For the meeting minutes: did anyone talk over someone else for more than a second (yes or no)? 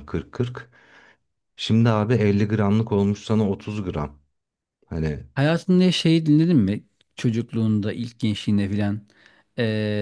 no